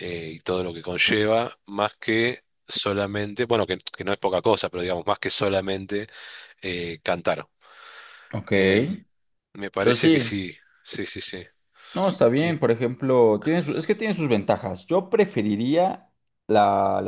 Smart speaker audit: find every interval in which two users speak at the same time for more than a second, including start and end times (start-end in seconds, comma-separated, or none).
none